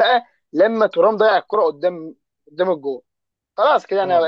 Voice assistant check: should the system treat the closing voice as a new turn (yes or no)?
yes